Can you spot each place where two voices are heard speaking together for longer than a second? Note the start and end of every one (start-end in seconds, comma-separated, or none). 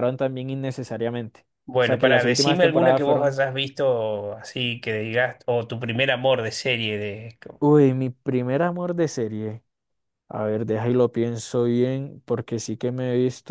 1.8-3.4